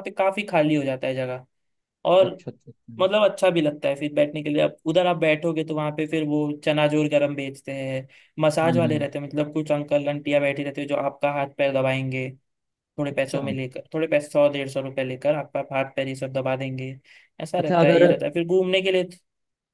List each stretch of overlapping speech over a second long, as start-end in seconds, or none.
none